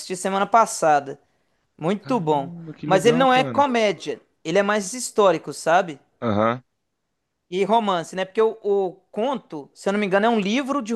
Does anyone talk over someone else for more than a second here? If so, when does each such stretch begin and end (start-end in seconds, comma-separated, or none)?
2.0-3.7